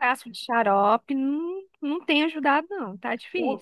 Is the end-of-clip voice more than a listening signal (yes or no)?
yes